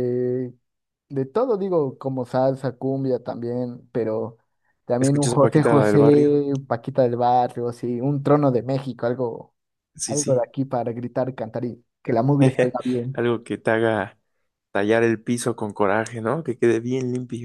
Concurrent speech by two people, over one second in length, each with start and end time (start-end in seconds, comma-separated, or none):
5.0-6.4